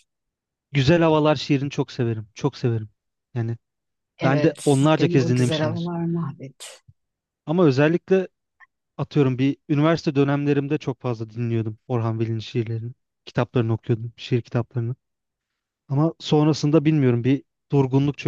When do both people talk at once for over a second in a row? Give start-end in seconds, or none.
4.2-5.9